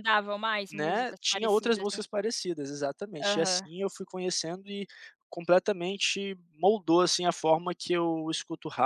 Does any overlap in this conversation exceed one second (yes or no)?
yes